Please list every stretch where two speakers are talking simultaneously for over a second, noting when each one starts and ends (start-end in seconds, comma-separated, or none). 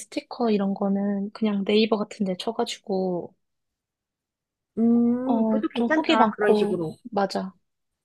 5.2-7.0